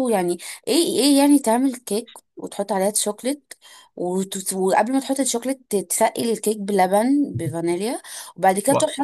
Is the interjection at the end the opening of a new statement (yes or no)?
no